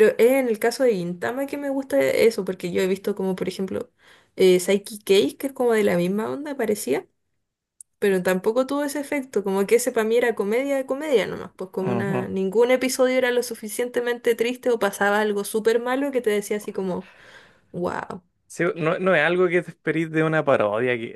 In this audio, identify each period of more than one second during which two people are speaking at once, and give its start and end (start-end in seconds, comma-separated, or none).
none